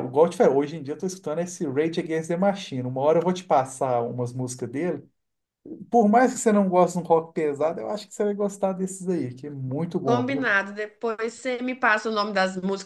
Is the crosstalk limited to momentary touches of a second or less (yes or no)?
yes